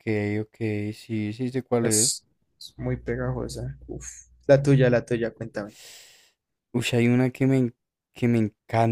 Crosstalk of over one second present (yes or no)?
no